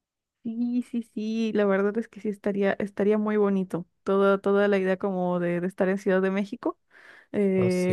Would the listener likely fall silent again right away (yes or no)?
yes